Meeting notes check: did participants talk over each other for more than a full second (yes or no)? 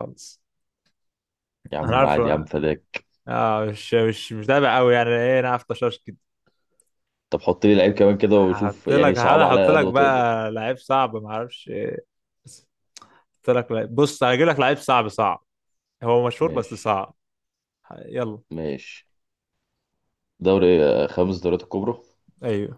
yes